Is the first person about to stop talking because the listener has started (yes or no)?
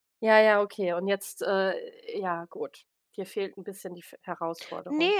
yes